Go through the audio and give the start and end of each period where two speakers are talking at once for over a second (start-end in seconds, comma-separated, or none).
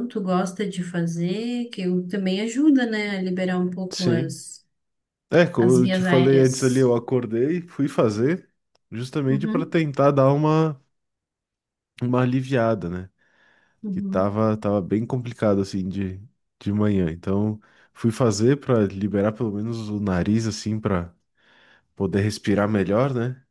5.6-6.9